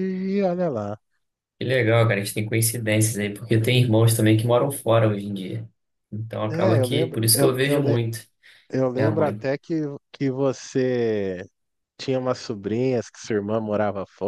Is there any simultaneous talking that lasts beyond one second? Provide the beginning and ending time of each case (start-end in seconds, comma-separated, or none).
6.5-8.0